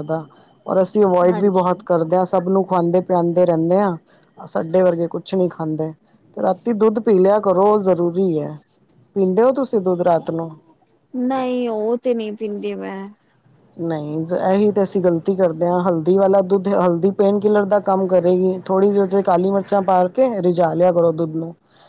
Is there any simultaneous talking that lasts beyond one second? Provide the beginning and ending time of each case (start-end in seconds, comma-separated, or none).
none